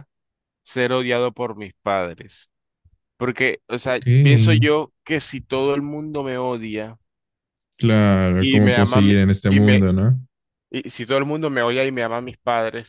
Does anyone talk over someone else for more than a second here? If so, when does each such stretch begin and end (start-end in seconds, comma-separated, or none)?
8.4-9.8